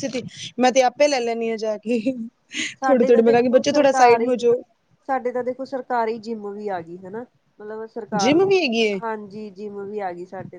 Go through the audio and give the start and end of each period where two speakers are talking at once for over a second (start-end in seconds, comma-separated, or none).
2.8-4.3